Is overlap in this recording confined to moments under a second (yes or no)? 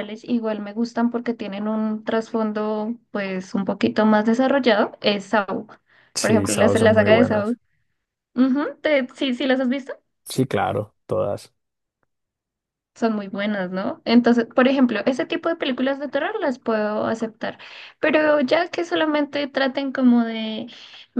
no